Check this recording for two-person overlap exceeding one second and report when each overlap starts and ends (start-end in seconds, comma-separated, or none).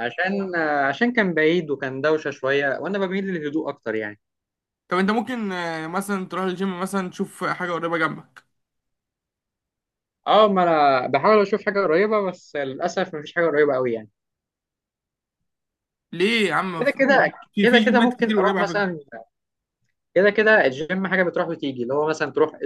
16.8-18.9